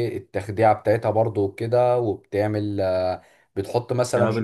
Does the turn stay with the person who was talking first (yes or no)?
yes